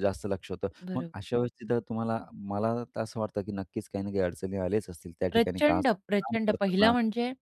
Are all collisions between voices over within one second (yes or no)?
no